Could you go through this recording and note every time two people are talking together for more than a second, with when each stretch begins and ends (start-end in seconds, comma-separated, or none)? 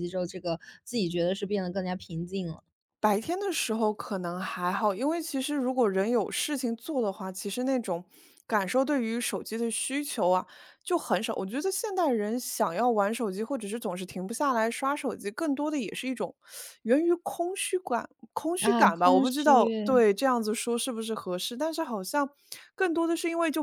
18.6-20.0